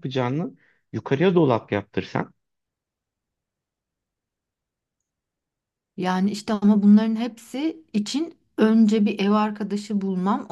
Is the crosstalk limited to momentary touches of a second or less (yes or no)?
yes